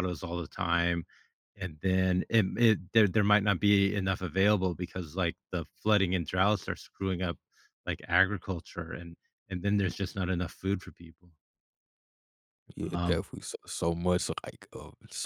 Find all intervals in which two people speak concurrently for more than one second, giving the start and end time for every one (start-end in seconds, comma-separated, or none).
none